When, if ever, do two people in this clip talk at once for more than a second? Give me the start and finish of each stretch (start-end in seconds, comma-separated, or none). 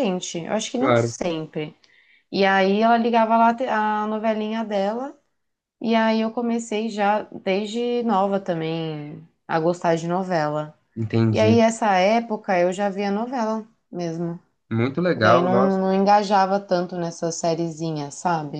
none